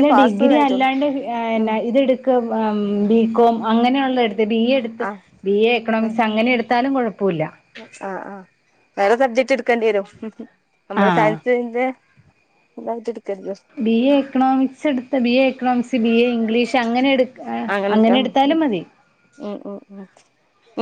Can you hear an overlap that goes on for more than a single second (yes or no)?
no